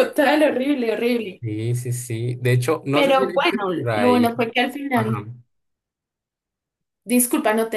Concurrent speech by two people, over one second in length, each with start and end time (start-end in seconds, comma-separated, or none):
2.9-4.3